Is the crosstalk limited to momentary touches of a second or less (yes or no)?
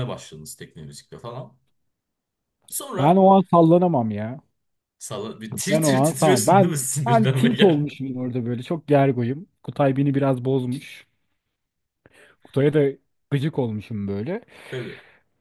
no